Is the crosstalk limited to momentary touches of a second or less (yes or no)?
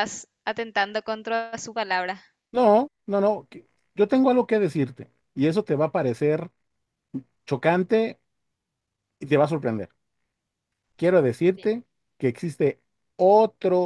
yes